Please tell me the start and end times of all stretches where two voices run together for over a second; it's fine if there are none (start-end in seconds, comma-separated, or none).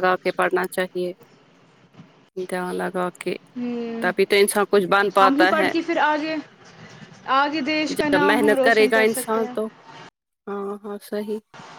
8.0-9.5